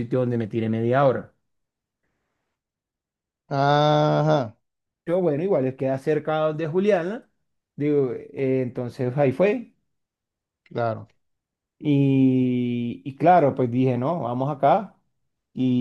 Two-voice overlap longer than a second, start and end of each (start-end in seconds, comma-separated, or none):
none